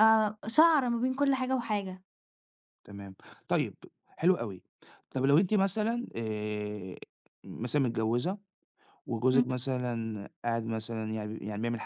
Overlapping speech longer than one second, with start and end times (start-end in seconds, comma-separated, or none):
none